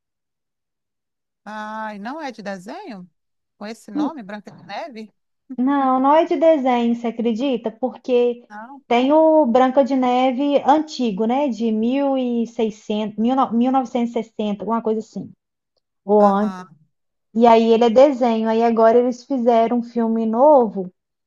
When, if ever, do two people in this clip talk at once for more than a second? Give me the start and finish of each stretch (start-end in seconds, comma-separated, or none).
none